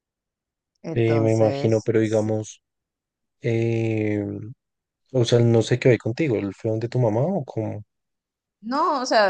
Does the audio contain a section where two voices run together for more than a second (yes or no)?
yes